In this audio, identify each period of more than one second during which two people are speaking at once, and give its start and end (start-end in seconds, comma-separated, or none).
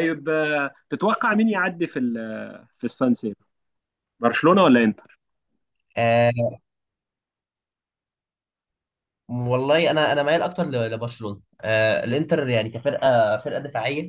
none